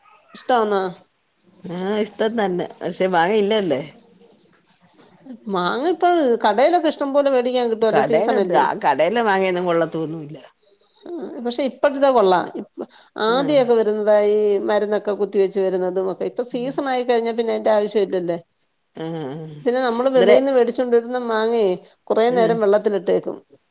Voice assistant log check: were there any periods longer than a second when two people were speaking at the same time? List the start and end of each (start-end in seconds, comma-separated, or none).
none